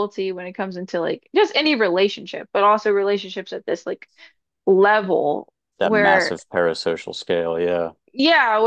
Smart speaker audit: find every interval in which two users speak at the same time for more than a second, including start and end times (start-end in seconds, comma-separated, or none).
none